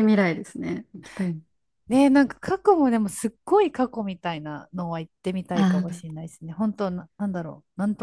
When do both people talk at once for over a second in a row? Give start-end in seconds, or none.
none